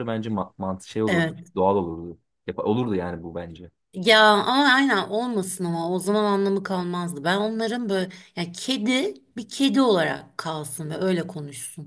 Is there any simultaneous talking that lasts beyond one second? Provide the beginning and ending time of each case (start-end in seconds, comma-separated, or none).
none